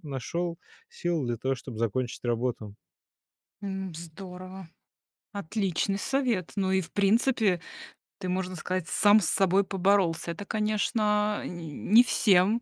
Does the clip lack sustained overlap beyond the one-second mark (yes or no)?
yes